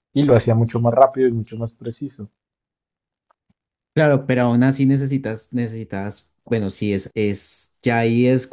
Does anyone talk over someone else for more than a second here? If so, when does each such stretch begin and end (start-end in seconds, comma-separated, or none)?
none